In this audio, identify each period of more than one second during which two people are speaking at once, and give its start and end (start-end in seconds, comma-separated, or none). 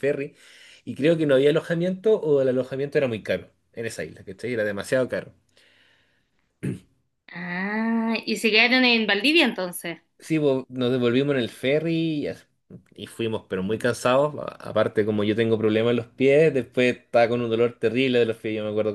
none